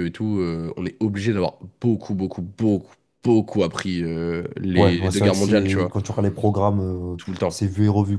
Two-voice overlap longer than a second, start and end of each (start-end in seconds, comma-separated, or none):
4.7-6.0